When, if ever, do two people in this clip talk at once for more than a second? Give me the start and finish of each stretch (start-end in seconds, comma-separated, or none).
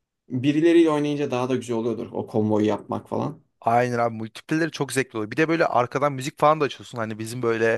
none